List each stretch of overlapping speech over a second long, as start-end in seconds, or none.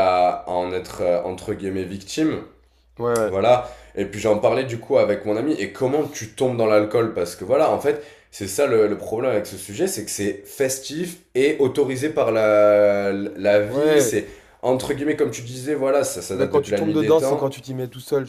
16.3-17.5